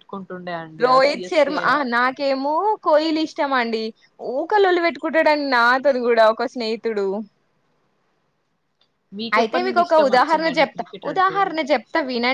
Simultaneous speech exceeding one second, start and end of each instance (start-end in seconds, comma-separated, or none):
9.4-11.4